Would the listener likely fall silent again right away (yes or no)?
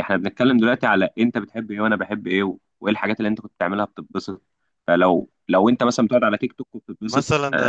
no